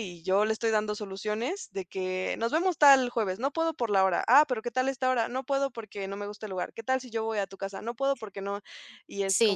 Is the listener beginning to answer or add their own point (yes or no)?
yes